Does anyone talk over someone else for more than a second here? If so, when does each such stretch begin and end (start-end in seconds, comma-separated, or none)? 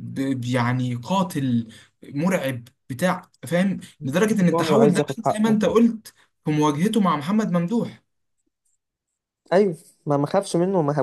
4.2-5.6